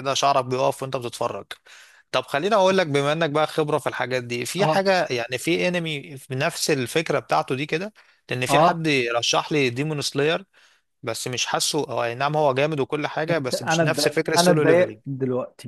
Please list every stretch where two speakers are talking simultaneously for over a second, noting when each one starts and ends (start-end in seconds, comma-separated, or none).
13.3-15.0